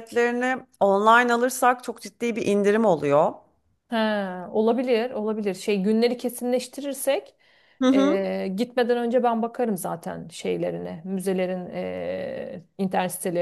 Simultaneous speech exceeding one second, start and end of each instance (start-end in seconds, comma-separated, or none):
none